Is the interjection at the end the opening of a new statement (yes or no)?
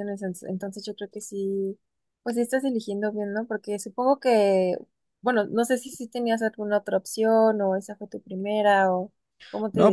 yes